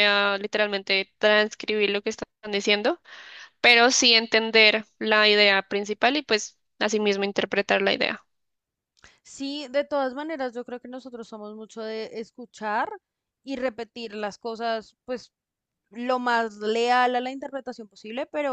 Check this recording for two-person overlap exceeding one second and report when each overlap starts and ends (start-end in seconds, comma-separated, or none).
none